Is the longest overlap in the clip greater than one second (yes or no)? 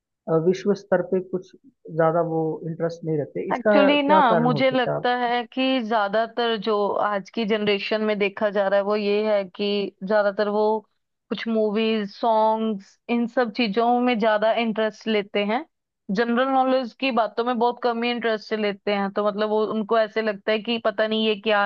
yes